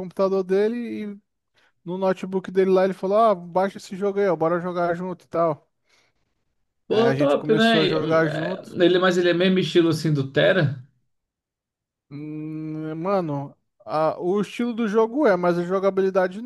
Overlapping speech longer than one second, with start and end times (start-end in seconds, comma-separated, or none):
6.9-8.8